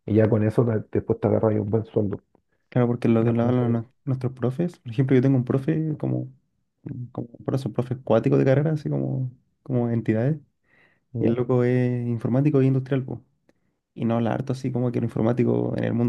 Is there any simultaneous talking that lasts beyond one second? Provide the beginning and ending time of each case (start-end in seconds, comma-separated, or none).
none